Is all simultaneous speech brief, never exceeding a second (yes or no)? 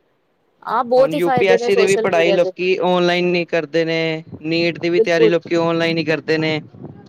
no